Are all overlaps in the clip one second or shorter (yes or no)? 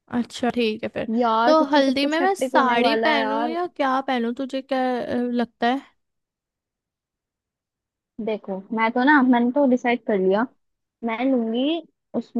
no